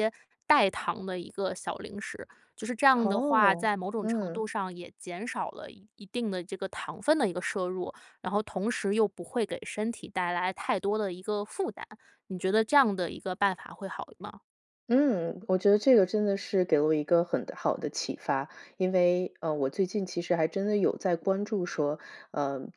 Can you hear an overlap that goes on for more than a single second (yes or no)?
yes